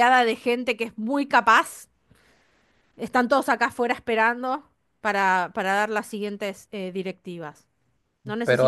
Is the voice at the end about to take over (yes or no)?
yes